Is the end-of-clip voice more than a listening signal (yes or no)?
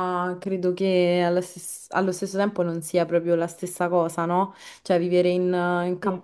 no